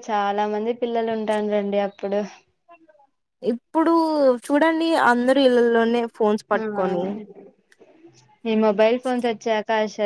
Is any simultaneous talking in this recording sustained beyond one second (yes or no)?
no